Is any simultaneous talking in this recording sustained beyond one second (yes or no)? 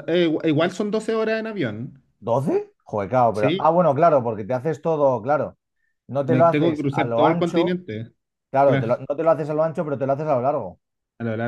yes